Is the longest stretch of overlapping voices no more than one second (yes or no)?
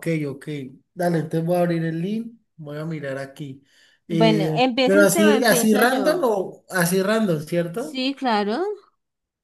no